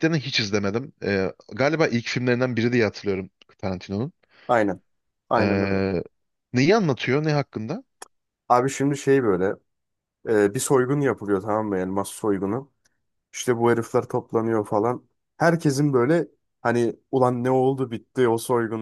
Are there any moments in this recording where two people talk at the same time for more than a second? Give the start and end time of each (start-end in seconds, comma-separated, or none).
none